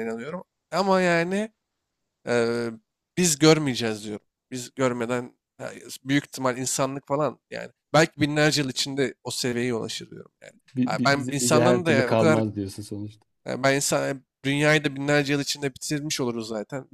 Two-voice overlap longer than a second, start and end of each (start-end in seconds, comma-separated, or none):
10.7-12.4